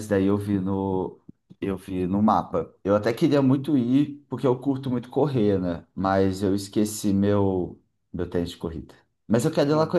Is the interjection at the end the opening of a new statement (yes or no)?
no